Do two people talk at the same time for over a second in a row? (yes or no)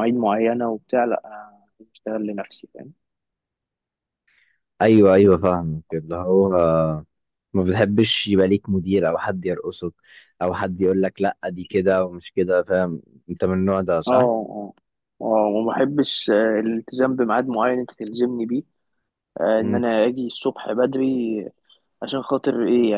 no